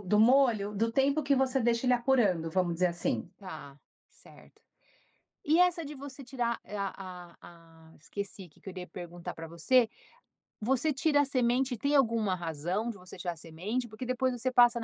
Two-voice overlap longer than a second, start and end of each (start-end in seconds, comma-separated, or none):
none